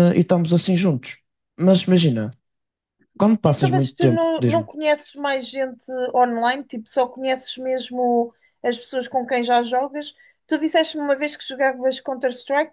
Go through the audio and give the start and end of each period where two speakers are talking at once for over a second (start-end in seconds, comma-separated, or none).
3.4-4.7